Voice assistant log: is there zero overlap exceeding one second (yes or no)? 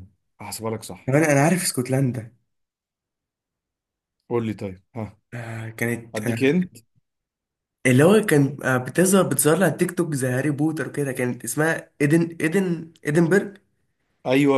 yes